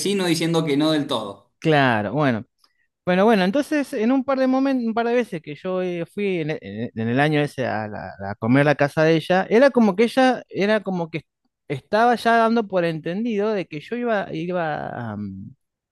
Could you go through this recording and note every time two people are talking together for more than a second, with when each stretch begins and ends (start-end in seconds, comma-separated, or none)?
none